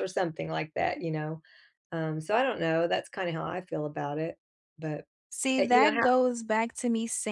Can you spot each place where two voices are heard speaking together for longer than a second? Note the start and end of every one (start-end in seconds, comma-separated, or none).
none